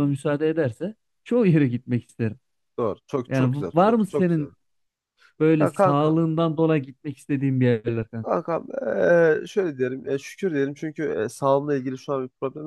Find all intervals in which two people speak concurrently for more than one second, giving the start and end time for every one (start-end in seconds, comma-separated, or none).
3.3-4.5